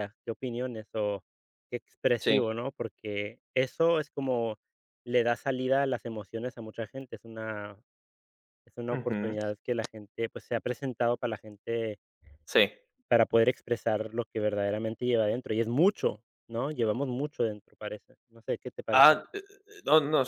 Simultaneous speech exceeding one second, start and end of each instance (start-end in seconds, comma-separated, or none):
none